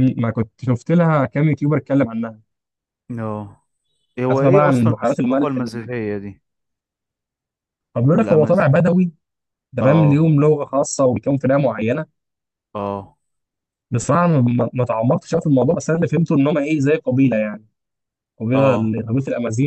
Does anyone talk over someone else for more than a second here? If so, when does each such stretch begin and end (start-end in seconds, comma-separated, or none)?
4.3-5.9